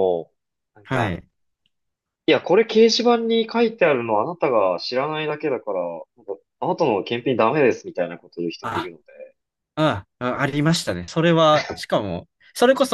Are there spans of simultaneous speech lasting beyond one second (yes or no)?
no